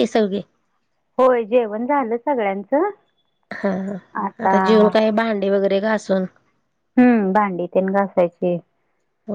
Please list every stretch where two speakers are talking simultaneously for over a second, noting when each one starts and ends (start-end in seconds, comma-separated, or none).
none